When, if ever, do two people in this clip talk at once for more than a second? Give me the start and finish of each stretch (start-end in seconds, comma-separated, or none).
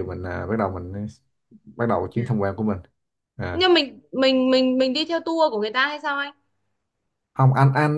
none